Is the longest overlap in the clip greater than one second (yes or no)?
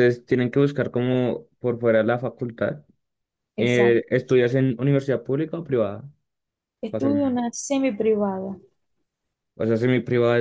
no